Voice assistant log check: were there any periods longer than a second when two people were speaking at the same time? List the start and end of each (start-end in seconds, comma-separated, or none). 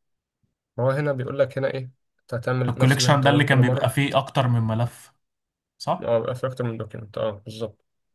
2.7-3.9